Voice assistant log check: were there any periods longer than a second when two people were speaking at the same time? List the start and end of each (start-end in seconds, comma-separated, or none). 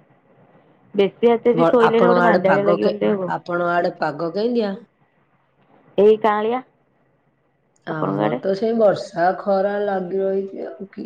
1.6-3.3